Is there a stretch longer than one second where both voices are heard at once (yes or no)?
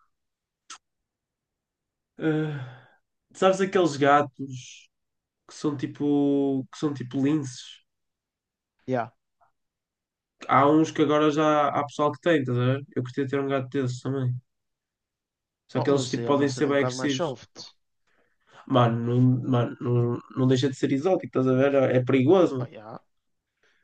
yes